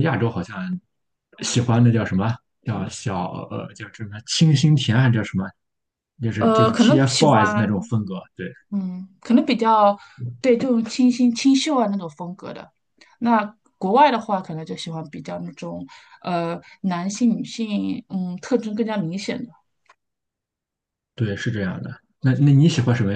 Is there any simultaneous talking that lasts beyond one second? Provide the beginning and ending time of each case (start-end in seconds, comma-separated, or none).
6.4-7.7